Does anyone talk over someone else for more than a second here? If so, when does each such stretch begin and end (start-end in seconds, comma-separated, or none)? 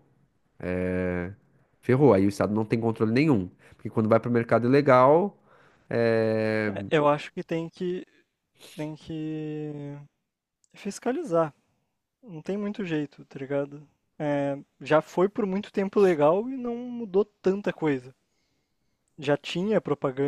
none